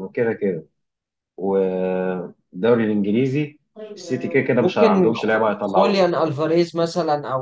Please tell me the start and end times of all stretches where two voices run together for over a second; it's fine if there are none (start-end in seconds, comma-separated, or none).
4.6-6.2